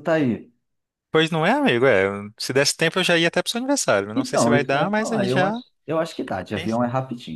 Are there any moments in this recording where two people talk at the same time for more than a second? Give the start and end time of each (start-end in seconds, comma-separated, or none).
4.1-5.6